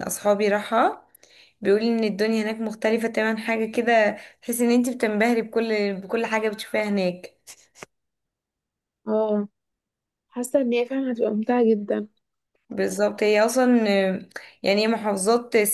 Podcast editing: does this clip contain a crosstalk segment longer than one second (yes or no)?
no